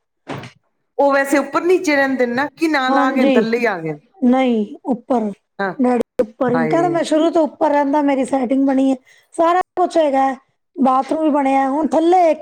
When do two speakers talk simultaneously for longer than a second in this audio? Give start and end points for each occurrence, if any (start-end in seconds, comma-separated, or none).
none